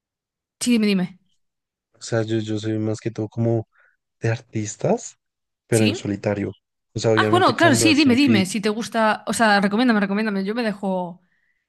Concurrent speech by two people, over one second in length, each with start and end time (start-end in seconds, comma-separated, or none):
7.1-8.5